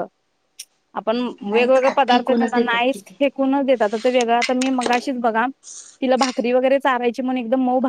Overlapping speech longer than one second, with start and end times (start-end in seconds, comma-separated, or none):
1.4-3.2